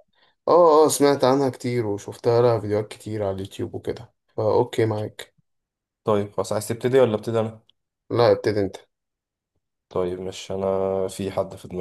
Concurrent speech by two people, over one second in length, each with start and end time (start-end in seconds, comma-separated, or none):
none